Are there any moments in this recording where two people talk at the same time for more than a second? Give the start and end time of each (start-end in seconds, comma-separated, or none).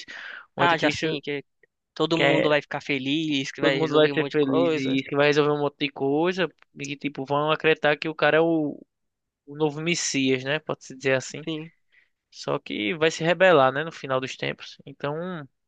3.6-4.9